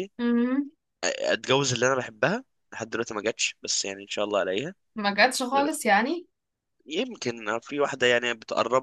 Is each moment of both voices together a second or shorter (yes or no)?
yes